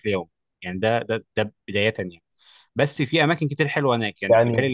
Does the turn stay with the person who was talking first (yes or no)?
no